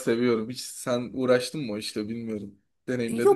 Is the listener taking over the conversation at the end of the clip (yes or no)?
yes